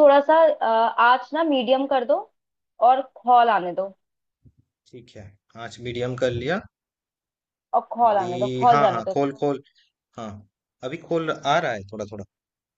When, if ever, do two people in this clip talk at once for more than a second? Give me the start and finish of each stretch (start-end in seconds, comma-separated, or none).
8.1-9.4